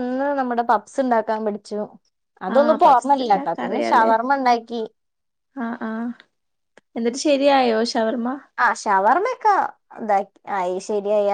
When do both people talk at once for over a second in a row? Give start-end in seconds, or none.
2.5-4.1